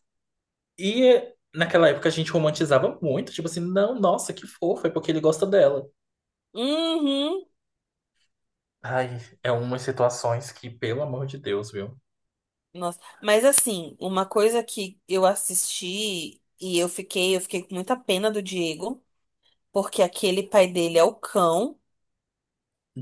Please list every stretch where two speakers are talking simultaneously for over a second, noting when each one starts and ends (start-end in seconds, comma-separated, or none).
none